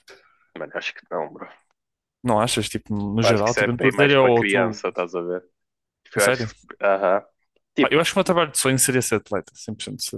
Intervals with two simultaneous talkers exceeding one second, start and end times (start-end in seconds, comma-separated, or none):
3.2-4.8